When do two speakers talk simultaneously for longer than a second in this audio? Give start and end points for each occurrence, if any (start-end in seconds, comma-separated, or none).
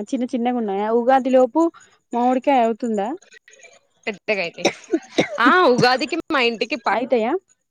none